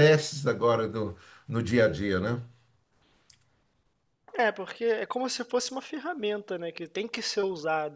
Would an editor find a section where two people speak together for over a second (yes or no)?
no